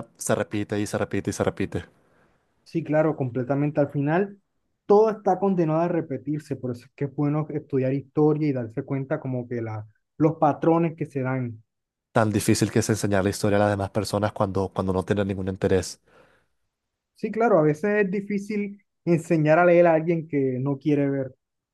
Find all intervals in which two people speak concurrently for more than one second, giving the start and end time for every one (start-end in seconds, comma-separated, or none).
none